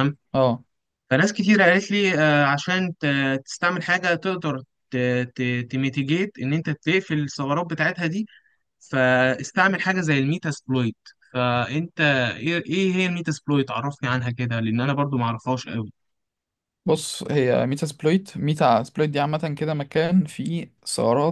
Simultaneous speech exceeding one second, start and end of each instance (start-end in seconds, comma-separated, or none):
none